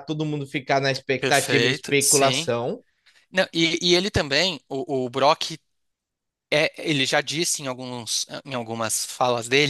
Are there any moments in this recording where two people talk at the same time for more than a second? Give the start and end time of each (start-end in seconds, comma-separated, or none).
1.2-2.5